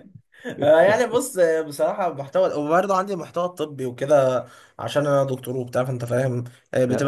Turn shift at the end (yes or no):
no